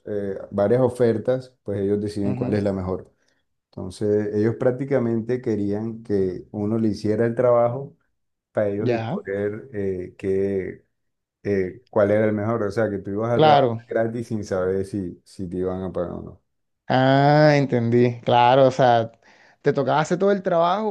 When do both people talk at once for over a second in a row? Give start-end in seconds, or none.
none